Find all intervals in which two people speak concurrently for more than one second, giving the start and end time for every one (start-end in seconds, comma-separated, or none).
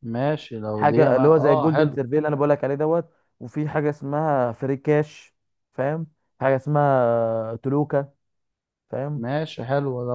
0.7-2.0